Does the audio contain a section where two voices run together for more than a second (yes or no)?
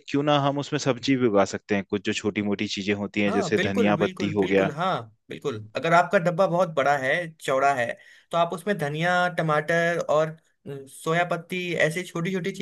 yes